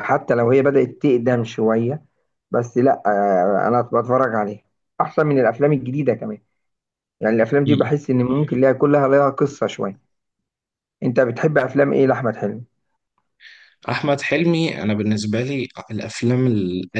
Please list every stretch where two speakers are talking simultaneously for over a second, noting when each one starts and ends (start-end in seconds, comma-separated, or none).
none